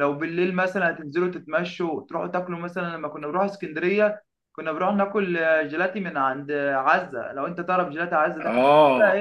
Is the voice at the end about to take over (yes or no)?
yes